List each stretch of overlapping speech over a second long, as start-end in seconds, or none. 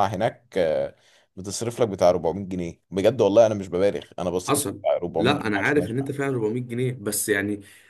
4.5-6.1